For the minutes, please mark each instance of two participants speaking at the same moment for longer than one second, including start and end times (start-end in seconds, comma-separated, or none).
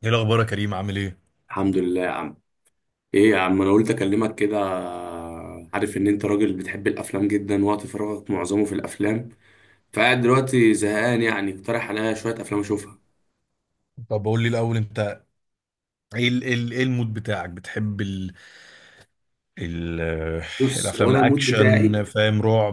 20.8-22.0